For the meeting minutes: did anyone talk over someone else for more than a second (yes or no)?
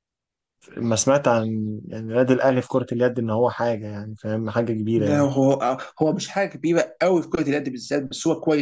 no